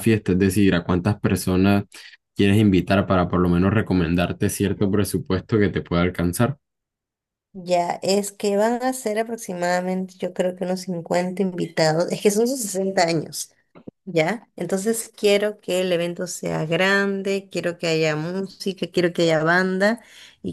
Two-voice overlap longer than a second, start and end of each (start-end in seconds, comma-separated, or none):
none